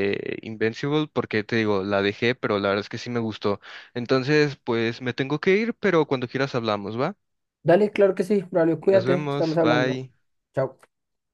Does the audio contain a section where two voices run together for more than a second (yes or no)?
yes